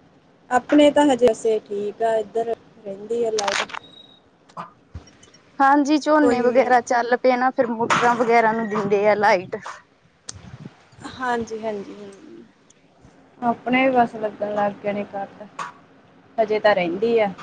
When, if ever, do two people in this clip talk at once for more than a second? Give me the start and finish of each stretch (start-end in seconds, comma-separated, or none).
none